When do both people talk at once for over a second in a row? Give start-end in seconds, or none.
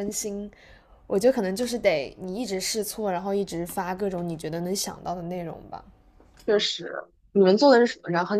none